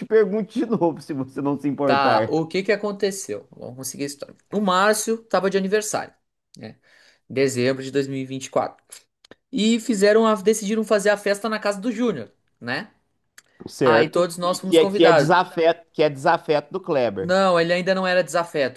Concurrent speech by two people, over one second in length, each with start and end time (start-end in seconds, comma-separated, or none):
13.8-15.4